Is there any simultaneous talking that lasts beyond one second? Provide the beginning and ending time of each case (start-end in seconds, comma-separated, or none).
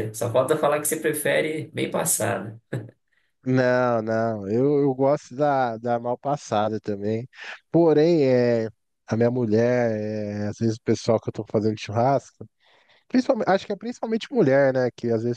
none